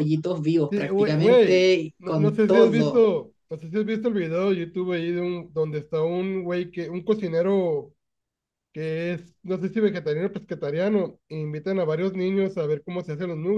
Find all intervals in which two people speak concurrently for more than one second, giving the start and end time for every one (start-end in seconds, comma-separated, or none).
0.7-3.1